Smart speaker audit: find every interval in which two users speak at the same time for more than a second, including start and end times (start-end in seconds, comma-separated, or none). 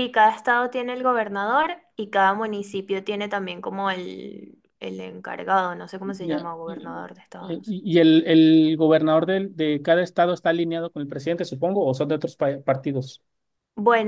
6.0-7.8